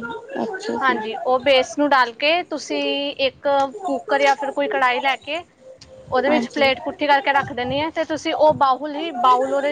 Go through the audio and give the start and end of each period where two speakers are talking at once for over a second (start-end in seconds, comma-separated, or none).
6.3-7.9